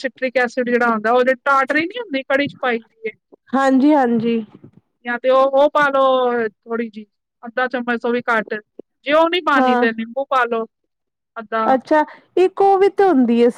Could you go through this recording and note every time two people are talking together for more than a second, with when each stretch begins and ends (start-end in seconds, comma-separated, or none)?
none